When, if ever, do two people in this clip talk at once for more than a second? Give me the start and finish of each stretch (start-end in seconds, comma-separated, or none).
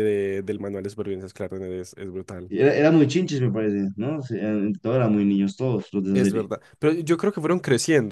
none